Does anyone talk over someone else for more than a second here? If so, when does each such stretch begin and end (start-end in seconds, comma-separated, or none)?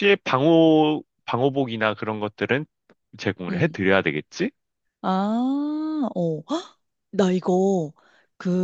none